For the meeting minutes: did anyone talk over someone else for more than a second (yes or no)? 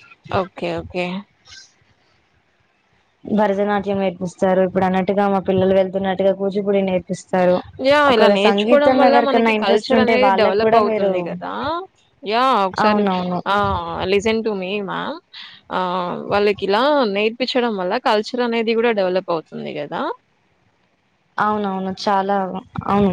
yes